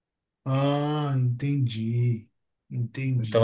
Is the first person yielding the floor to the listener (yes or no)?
yes